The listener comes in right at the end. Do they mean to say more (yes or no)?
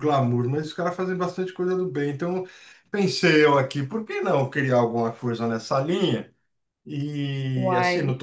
no